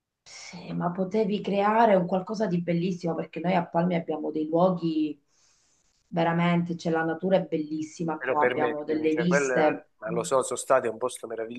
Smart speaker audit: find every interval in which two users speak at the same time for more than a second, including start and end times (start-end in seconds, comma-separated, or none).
8.2-10.2